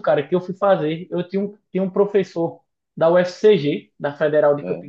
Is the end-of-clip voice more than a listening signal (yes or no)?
no